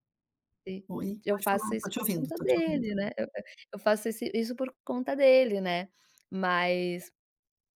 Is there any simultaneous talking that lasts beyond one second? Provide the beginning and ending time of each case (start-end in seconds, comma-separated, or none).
1.0-2.9